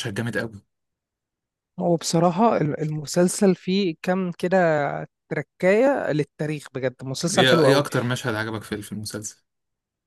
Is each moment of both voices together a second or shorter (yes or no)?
yes